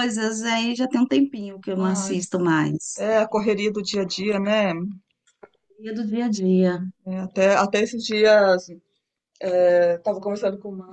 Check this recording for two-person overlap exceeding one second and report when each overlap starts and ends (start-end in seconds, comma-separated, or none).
none